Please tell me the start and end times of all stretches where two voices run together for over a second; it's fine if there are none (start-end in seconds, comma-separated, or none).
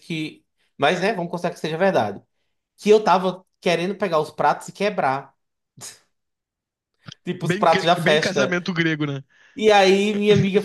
7.4-8.6